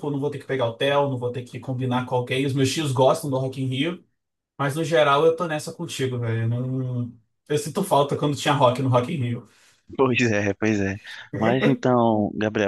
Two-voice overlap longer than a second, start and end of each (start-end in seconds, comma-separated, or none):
none